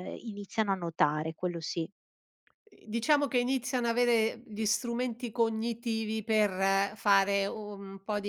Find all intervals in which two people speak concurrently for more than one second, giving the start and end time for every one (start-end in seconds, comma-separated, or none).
none